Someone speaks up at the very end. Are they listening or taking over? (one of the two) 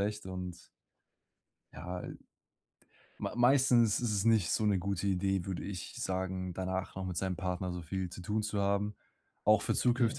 listening